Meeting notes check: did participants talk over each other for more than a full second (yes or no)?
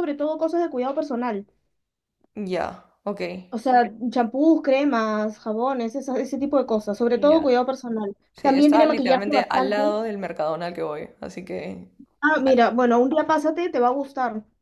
yes